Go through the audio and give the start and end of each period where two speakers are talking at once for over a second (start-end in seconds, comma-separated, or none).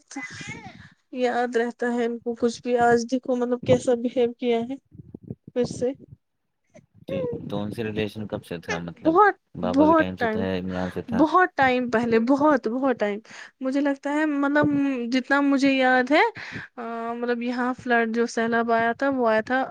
none